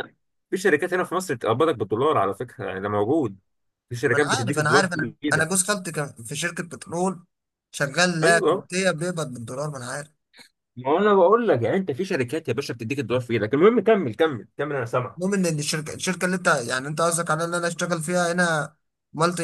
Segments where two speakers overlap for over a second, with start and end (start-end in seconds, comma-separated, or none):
4.1-5.5